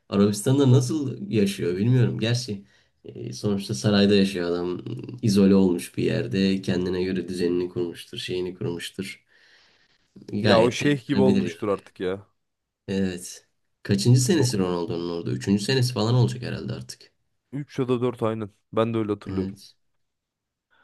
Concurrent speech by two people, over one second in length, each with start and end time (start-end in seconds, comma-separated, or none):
10.4-11.7